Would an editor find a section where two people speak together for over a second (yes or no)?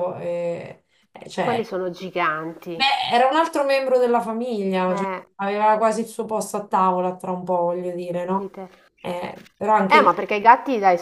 no